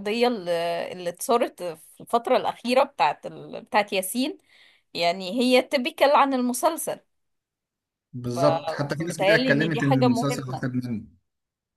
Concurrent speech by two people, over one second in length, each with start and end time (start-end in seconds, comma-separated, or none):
9.0-10.6